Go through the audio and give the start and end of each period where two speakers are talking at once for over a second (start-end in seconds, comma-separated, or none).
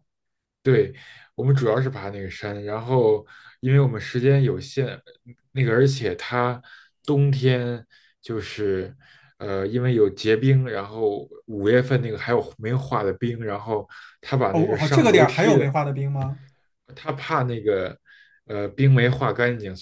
14.5-15.7